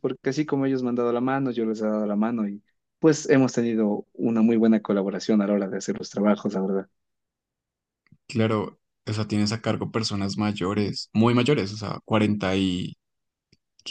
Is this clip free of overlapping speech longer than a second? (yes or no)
yes